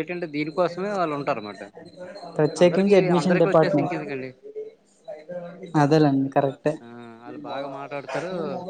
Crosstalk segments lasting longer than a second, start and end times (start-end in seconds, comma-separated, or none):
2.6-4.0